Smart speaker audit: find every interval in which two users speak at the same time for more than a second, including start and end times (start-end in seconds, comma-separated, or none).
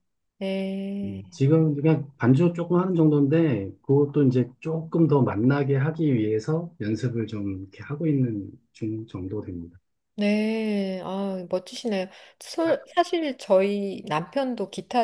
none